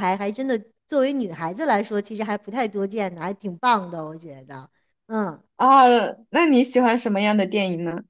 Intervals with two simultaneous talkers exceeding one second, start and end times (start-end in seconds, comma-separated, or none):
none